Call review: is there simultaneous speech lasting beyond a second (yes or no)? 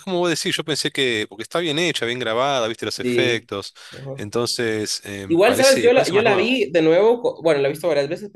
yes